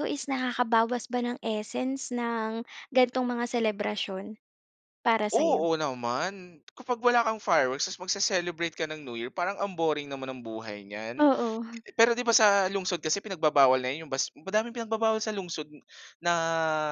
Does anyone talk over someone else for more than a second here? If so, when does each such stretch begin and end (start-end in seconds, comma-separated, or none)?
none